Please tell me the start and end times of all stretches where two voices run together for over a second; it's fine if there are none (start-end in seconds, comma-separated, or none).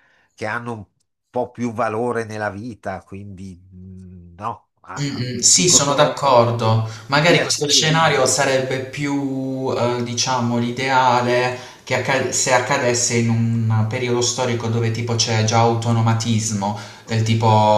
5.0-6.3, 7.1-8.3